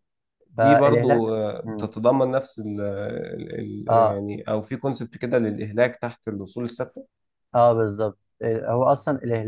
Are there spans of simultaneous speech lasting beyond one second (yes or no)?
yes